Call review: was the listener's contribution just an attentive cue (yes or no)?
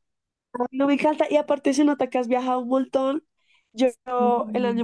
yes